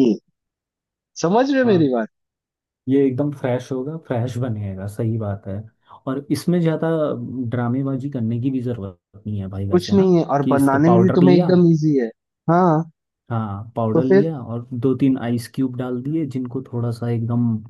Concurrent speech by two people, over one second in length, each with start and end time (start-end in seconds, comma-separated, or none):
9.7-11.5